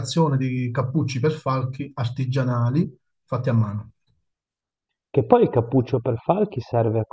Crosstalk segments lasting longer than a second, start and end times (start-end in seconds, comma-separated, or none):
none